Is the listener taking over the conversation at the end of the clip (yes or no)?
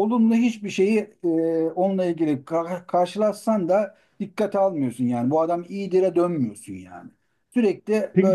no